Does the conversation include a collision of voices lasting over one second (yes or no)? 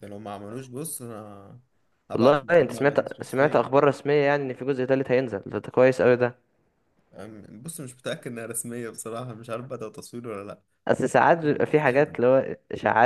yes